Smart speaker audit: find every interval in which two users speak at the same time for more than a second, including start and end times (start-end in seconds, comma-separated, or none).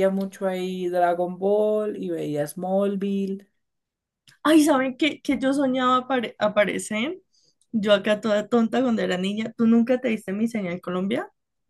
none